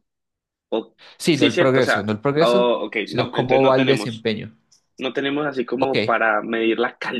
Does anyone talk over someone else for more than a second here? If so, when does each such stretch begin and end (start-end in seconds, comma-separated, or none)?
1.2-4.2